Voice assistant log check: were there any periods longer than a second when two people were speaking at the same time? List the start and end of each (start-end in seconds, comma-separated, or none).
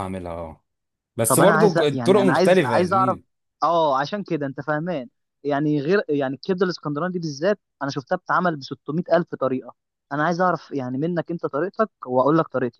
1.3-3.2